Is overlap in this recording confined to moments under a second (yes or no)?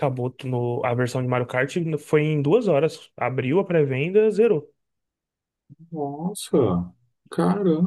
yes